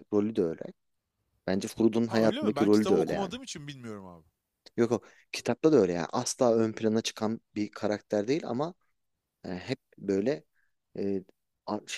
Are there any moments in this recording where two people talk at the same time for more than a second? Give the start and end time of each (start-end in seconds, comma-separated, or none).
2.1-3.3